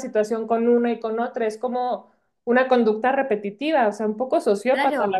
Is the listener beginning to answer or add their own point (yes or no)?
yes